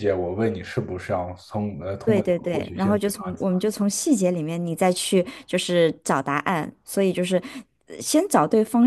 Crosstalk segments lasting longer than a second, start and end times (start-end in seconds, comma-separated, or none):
2.0-3.2